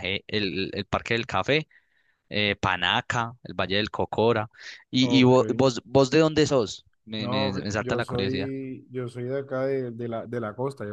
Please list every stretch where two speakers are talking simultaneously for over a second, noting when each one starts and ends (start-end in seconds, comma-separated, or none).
7.2-8.5